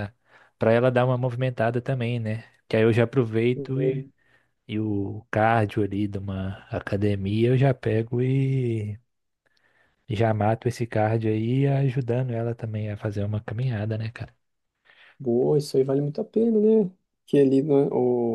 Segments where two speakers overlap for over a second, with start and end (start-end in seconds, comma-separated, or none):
none